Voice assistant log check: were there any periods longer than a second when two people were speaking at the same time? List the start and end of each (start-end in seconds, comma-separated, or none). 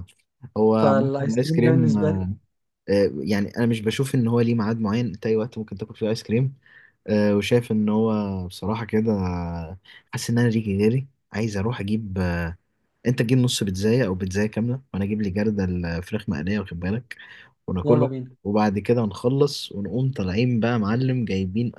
0.8-2.2